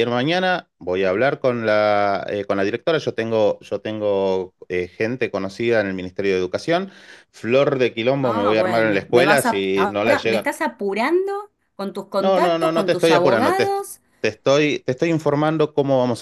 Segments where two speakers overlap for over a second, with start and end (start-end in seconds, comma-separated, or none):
8.2-10.5, 12.2-13.7